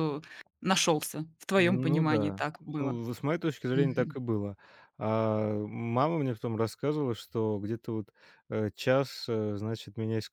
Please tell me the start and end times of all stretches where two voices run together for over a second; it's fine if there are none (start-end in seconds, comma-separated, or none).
1.6-3.0